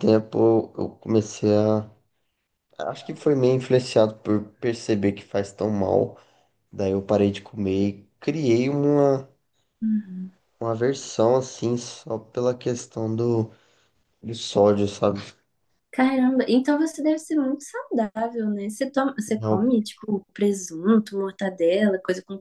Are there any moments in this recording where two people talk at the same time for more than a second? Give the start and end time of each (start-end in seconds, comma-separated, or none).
none